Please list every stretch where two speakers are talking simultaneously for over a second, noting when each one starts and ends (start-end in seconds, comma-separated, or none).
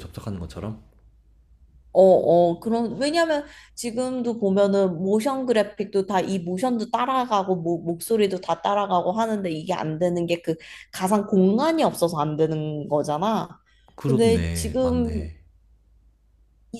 14.1-15.3